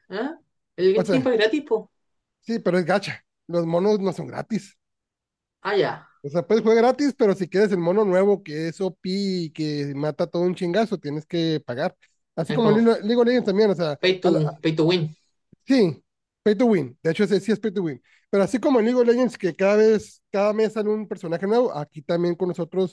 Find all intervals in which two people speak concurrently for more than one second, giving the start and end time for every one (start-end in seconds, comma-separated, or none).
none